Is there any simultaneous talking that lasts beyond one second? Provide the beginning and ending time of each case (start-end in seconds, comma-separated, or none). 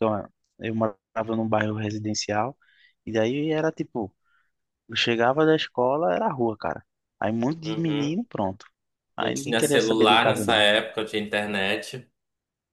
9.2-10.6